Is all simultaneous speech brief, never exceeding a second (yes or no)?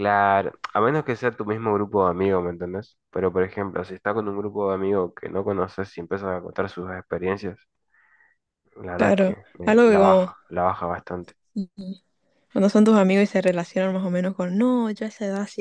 no